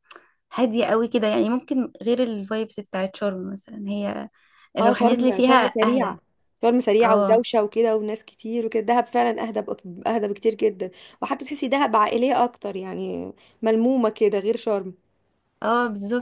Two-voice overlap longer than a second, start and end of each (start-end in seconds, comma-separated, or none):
4.8-6.2